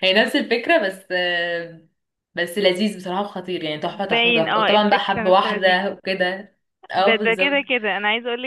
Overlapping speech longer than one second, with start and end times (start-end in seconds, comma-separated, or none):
3.9-5.8